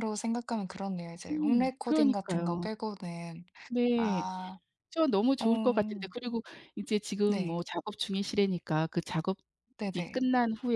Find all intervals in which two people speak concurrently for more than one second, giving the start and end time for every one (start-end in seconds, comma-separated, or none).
1.3-2.7